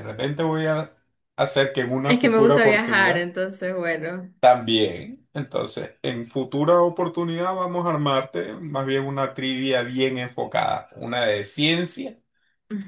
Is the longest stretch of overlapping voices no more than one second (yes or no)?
no